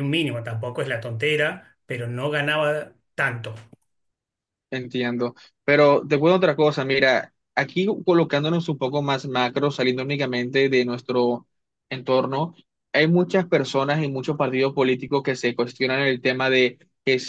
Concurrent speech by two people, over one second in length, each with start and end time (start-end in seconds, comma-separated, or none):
none